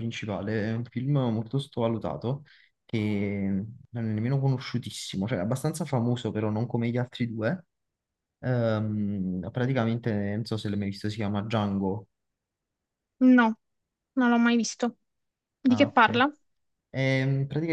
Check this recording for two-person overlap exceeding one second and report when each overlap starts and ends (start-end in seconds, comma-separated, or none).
none